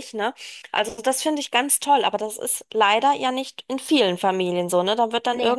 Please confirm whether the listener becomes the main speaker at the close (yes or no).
no